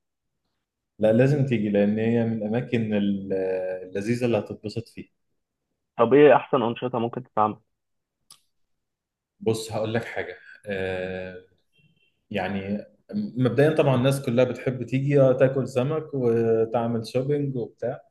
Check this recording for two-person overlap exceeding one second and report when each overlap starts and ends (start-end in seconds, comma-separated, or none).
none